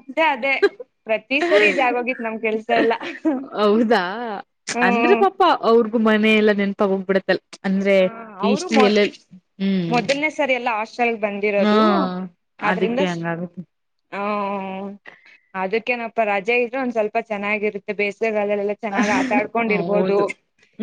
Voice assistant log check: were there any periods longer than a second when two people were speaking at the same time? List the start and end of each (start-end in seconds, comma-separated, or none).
18.9-20.2